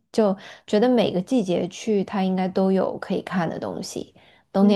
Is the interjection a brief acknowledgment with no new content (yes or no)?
yes